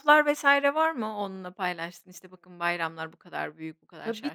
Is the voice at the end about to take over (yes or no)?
yes